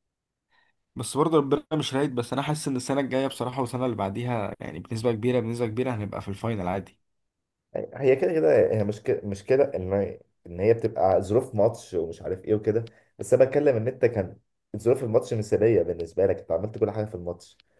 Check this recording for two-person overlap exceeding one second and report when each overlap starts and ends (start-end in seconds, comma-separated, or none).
none